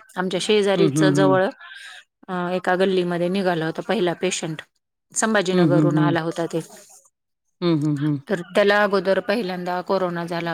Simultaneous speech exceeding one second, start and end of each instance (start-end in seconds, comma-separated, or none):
none